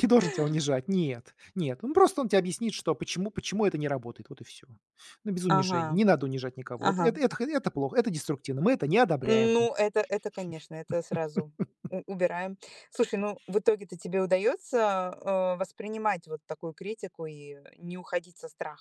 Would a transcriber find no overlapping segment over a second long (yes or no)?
yes